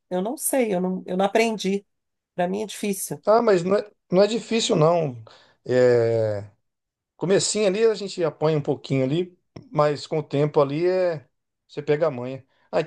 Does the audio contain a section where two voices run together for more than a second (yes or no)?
no